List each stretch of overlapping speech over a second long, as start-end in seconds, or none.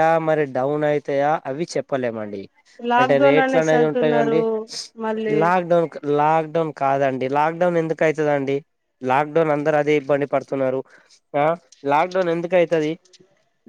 3.0-4.4